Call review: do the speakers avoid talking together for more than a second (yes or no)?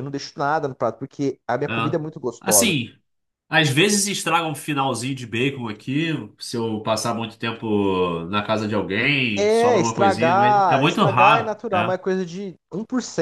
no